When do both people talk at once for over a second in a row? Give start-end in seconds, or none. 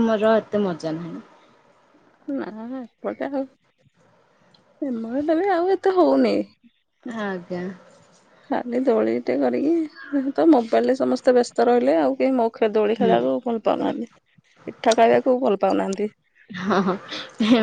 none